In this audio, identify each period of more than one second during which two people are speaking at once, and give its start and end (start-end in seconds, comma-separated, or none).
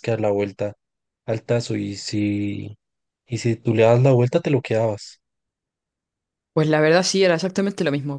none